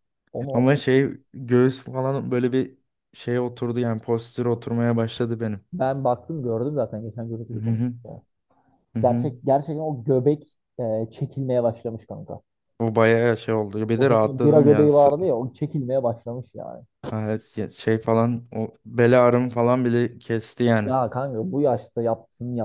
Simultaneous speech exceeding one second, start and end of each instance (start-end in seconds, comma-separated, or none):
14.0-15.2